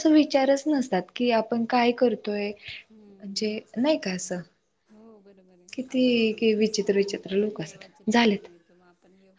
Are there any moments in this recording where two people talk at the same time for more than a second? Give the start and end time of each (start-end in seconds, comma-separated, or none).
5.7-8.5